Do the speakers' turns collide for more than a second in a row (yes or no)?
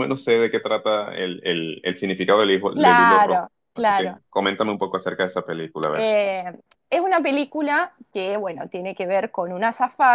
yes